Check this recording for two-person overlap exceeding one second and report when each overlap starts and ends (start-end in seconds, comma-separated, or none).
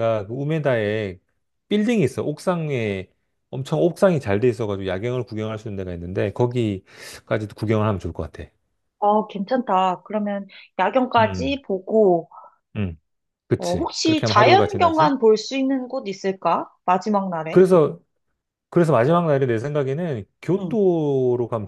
13.6-15.1